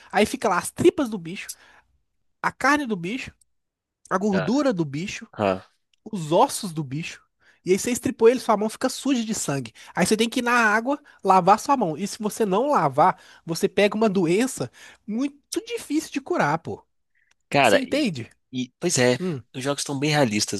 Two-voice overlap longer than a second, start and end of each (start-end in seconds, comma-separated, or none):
none